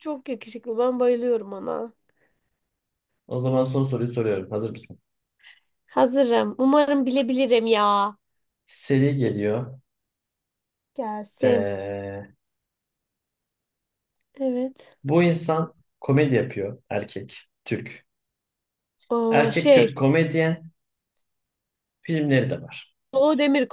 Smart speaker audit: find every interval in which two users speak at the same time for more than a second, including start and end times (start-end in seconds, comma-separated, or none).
none